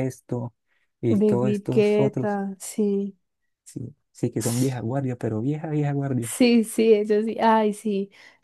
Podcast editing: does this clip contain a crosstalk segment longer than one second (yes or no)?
yes